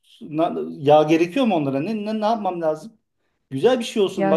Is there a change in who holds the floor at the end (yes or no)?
no